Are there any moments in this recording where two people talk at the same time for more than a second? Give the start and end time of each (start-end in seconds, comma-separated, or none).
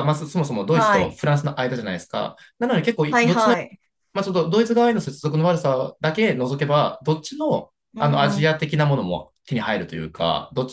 none